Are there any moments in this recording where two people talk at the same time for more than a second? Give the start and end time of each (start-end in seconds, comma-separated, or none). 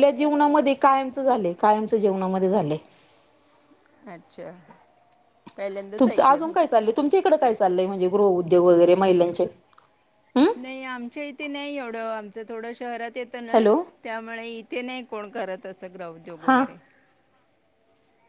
none